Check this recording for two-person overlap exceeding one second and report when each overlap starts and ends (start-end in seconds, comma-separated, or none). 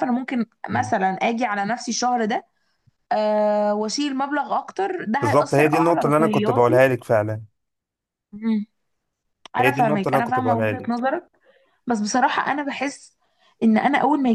5.2-6.8, 9.6-11.0